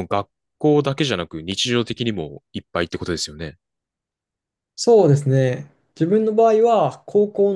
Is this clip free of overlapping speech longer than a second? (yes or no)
yes